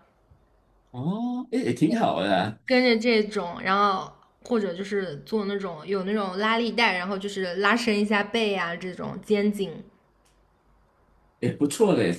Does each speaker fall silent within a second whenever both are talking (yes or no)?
yes